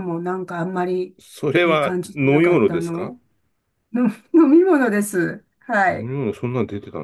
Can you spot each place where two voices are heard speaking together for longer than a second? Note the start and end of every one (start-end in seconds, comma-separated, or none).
1.6-3.1